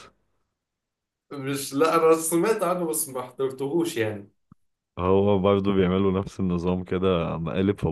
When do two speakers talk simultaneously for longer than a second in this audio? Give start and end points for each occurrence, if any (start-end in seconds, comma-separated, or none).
none